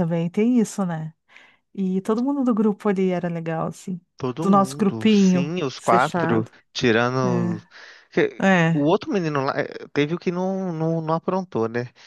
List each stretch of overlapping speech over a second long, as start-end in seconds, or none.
4.4-6.5